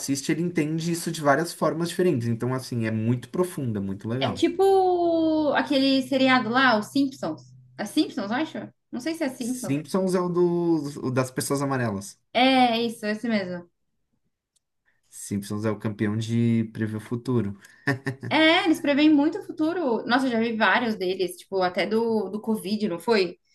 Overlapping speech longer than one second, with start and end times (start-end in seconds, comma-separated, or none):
none